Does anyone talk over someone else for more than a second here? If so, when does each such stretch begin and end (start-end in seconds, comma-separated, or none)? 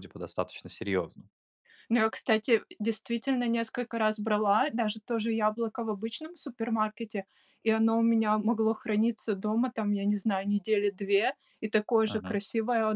none